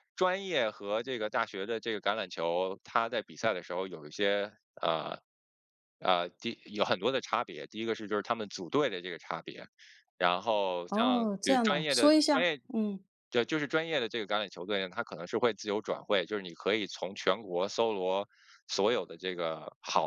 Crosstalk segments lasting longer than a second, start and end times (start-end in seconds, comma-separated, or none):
10.9-12.6